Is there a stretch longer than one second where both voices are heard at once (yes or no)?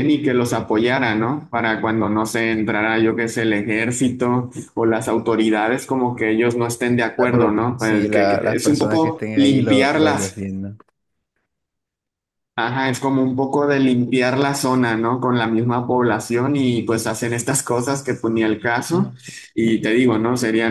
yes